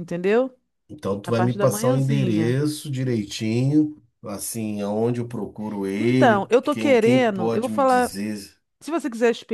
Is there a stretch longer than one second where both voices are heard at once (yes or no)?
yes